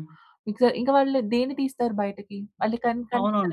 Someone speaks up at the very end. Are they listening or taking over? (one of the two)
taking over